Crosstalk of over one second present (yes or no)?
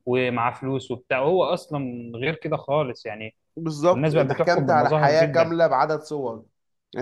yes